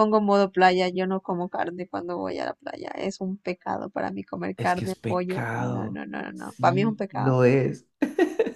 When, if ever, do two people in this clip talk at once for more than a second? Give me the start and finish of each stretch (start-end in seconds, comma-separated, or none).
4.6-7.4